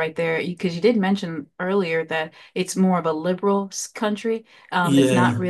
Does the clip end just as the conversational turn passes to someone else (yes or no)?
no